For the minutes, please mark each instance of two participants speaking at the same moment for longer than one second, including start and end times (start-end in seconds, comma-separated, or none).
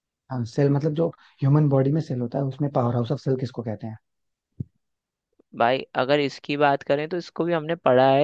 none